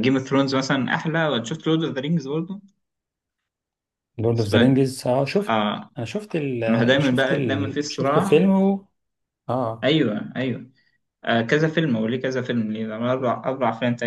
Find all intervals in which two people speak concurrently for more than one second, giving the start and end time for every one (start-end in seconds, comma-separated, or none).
6.7-8.5